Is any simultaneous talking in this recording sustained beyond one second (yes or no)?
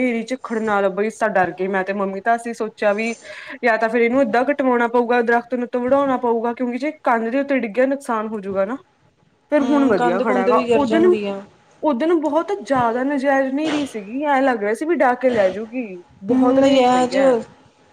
yes